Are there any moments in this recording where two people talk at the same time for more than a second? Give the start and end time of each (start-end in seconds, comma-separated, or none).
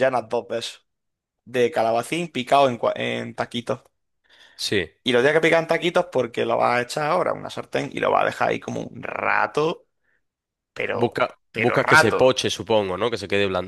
10.9-12.3